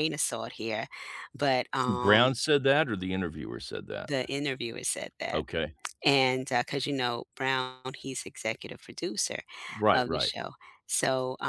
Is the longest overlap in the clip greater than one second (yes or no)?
no